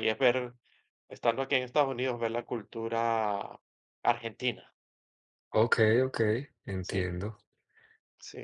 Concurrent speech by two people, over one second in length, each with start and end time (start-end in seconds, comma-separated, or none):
none